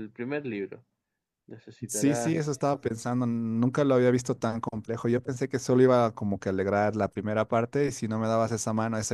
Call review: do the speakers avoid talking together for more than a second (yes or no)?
yes